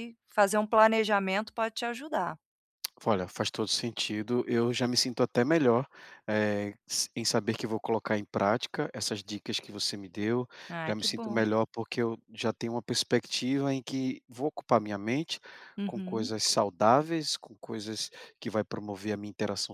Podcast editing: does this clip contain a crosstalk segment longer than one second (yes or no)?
no